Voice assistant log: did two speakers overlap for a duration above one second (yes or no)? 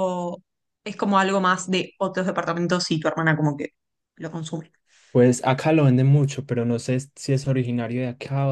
no